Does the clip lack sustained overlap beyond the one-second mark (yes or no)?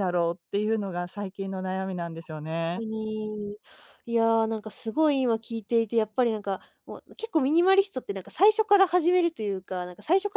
yes